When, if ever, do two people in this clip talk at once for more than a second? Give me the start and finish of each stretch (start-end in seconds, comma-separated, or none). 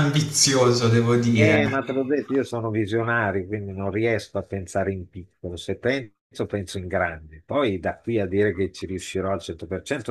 none